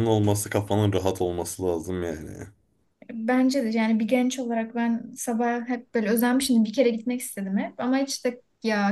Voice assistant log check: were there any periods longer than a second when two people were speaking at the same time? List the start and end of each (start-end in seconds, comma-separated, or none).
none